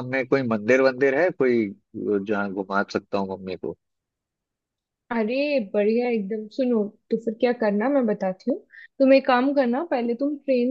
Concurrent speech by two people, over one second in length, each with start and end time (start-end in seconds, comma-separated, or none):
none